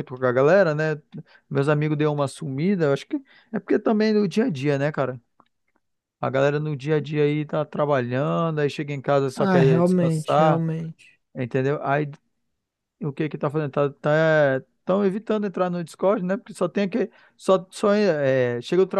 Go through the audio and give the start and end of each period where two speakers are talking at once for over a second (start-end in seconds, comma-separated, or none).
9.4-10.6